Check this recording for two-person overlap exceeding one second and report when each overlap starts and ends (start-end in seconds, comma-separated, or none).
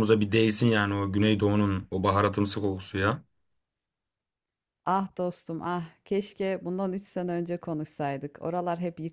none